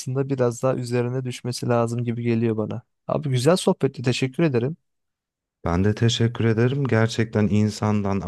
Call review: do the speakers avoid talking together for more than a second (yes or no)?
yes